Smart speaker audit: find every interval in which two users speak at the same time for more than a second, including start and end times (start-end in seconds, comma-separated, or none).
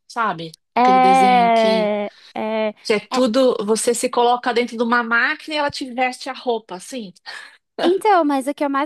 0.8-1.9